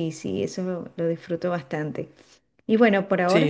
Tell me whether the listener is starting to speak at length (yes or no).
yes